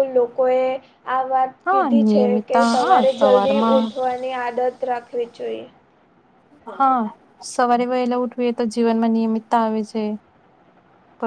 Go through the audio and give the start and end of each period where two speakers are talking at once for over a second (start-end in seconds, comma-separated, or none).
1.7-3.9